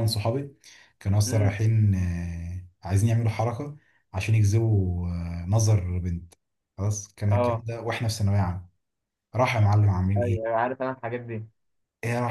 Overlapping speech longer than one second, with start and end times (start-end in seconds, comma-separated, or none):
none